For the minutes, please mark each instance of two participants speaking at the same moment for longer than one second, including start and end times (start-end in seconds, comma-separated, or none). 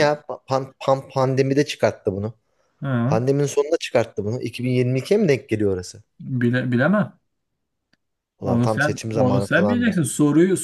8.4-10.0